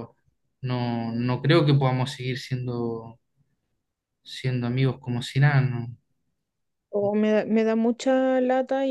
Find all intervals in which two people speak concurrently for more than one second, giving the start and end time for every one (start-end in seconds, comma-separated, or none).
none